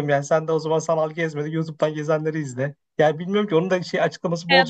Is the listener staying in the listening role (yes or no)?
no